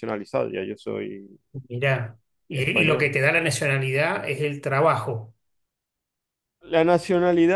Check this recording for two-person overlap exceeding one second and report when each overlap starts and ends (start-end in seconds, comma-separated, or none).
none